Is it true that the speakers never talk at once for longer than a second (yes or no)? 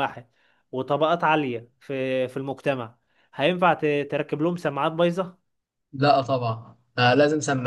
yes